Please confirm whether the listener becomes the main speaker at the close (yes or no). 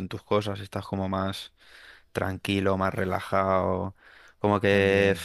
no